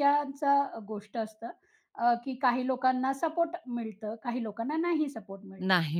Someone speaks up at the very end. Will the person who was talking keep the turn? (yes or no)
no